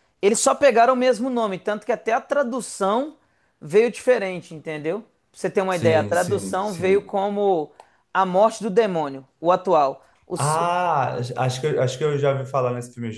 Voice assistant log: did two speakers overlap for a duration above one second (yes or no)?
yes